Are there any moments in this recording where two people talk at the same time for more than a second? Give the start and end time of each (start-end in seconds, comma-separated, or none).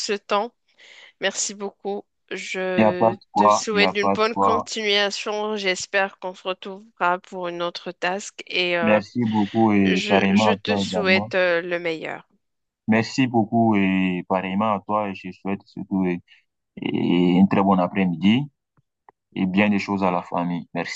2.8-4.7, 9.8-11.3